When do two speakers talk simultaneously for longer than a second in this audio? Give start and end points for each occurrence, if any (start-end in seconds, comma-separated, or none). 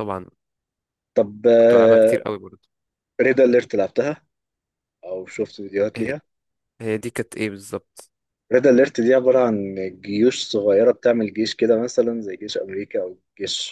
none